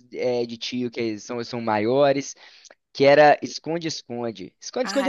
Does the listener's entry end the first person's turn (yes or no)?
yes